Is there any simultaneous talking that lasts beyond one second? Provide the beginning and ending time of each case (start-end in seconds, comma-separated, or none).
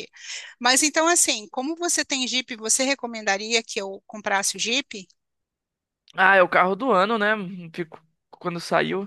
none